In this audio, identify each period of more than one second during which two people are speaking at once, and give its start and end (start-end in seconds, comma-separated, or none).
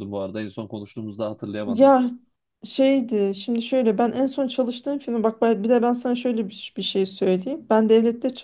none